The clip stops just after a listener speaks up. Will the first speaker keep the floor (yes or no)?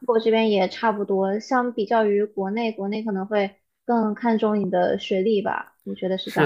no